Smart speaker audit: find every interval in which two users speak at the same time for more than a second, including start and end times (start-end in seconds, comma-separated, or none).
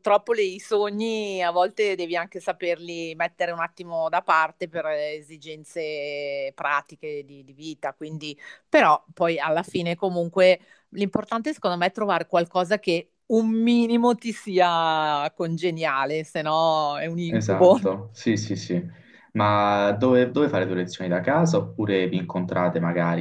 none